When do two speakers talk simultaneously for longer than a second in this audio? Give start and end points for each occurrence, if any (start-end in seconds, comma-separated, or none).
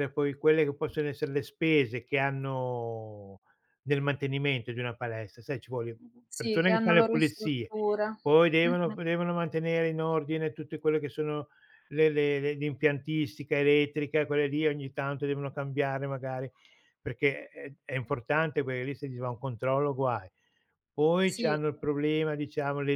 6.3-7.7